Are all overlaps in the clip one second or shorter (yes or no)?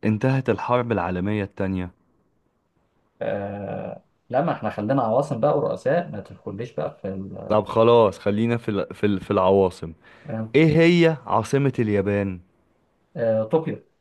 yes